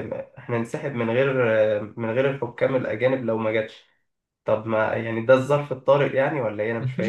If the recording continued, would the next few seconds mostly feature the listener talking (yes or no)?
yes